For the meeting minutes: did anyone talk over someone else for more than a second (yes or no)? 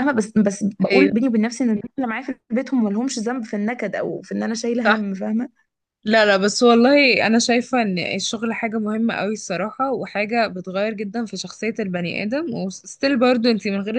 no